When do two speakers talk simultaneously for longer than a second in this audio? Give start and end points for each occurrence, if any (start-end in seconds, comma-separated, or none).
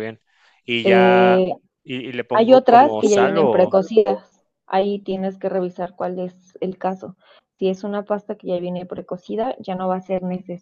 2.4-3.8